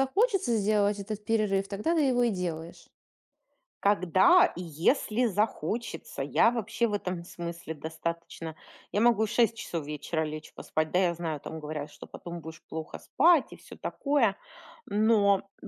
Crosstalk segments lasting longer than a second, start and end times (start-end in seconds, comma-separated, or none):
none